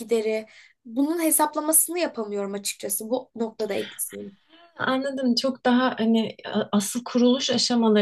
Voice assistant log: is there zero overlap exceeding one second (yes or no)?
yes